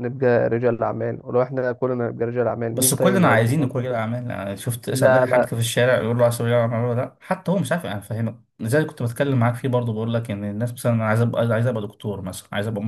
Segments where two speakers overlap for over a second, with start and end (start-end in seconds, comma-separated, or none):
2.7-4.0